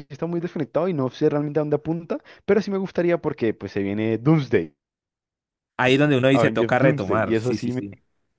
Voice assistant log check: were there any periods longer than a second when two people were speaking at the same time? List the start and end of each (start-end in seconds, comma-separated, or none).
5.8-7.8